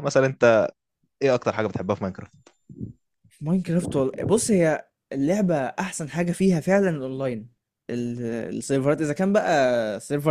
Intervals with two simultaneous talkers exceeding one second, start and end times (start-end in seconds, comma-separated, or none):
none